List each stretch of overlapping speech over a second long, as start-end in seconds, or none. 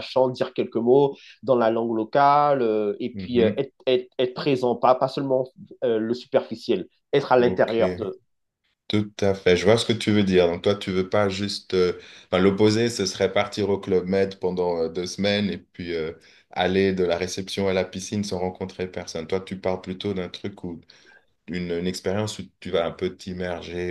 none